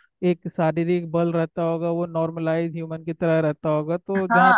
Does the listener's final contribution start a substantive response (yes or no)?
yes